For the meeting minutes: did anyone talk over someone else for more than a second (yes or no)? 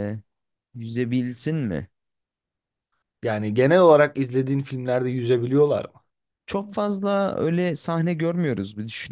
no